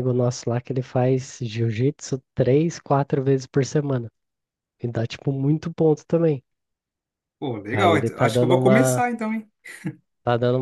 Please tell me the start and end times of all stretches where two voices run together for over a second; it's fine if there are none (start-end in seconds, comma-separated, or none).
7.7-9.1